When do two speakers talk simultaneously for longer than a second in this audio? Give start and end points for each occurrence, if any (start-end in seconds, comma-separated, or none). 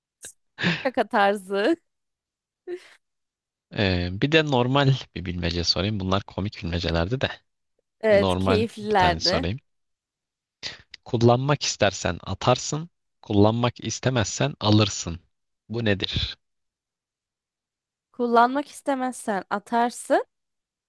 8.1-9.5